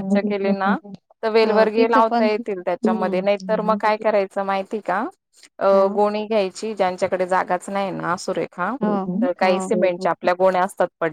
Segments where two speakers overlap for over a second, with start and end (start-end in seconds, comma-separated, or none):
1.4-3.9